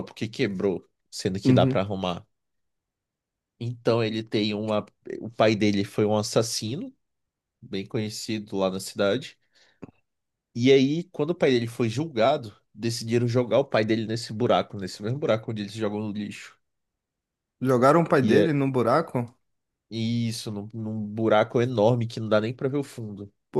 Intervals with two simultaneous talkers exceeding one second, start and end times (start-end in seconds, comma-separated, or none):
none